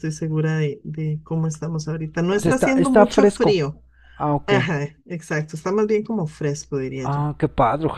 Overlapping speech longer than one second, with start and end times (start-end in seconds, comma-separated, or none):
2.3-3.6